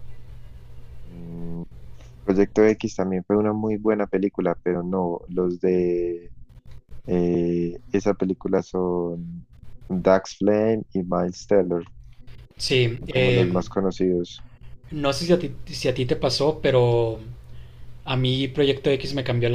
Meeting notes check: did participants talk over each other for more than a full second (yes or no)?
no